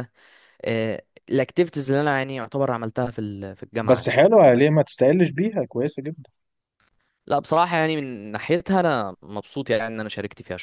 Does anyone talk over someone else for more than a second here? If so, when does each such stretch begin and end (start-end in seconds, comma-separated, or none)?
none